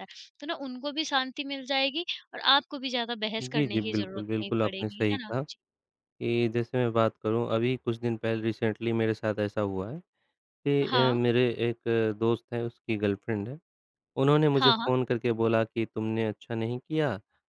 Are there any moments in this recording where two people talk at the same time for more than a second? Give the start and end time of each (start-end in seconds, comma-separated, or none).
3.4-5.3